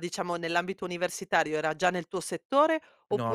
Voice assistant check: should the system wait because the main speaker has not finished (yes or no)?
yes